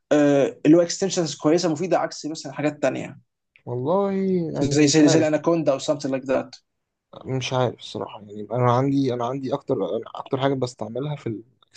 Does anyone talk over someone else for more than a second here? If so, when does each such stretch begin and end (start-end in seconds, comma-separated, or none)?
none